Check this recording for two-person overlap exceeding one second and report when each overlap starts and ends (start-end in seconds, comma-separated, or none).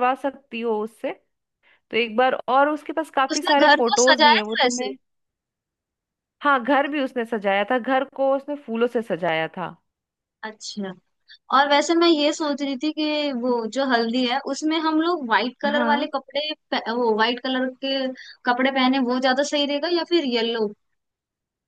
3.3-4.9